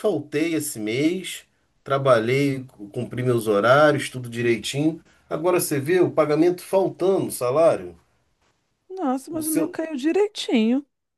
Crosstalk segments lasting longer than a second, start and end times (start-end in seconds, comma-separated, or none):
none